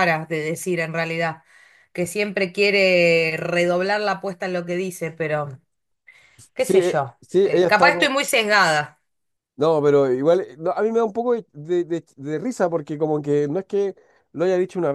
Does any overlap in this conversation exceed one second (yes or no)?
yes